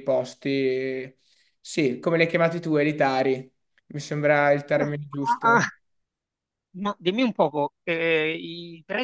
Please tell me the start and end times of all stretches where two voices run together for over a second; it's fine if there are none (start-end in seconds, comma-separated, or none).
none